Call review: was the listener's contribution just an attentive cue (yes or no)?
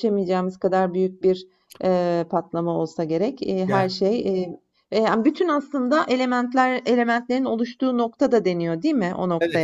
no